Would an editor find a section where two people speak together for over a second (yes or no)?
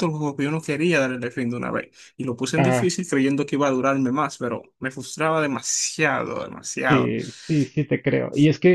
no